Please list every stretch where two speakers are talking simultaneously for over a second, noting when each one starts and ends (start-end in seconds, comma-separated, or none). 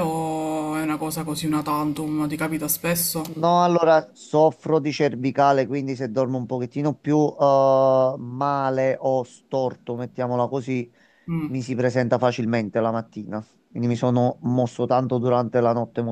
none